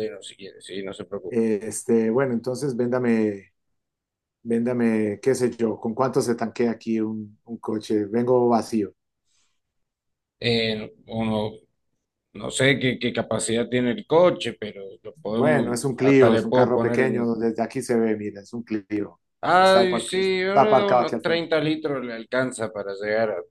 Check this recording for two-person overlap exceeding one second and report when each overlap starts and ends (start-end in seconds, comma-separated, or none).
15.1-17.3, 19.6-21.4